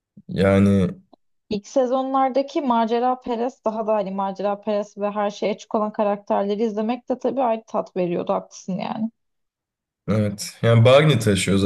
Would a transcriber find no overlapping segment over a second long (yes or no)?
yes